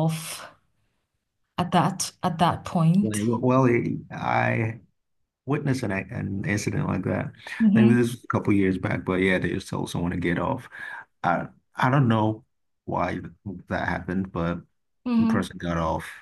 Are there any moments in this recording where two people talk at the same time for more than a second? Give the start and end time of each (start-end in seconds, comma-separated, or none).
none